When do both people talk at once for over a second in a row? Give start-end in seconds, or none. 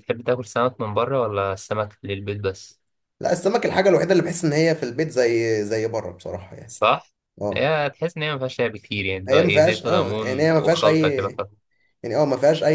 9.3-11.3